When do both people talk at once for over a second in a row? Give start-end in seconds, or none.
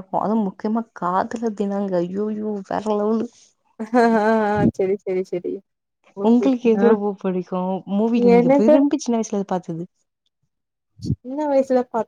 none